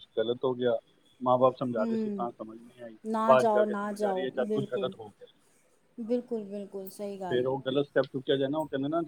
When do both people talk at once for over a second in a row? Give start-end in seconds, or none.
3.4-4.9